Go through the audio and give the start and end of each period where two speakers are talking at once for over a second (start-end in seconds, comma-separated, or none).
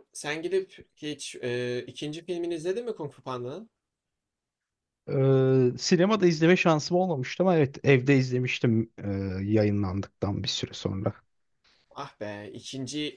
none